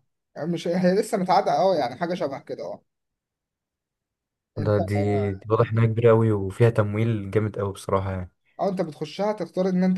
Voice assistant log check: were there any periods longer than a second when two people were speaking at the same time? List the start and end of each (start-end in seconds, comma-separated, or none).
none